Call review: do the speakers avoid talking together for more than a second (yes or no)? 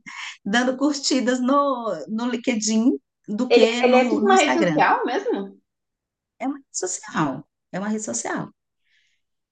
no